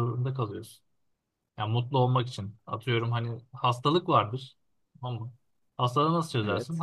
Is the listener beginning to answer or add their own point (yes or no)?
no